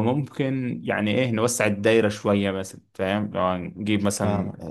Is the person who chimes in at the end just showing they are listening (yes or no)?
yes